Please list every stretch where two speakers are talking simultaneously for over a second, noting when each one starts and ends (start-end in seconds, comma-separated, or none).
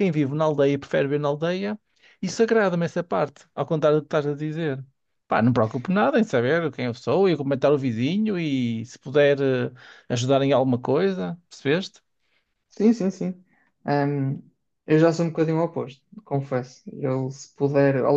none